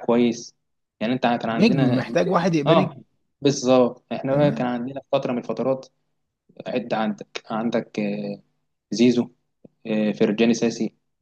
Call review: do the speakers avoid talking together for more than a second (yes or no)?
yes